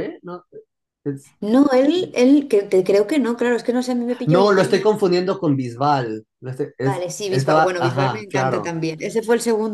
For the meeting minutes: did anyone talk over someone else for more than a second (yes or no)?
yes